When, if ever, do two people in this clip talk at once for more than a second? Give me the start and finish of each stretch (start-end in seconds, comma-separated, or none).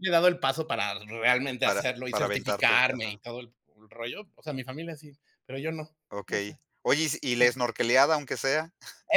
1.6-3.2